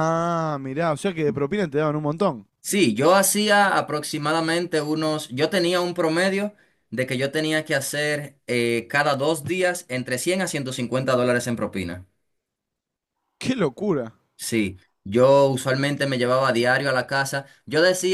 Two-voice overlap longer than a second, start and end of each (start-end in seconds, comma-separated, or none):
none